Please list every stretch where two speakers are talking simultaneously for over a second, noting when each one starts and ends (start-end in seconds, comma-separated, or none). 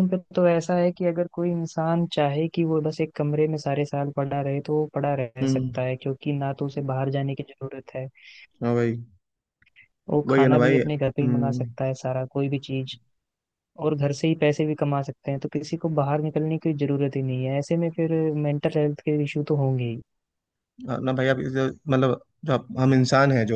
10.3-11.7